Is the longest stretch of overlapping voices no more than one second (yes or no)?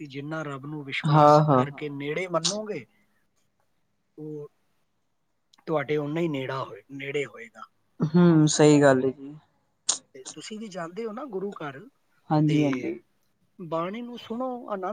yes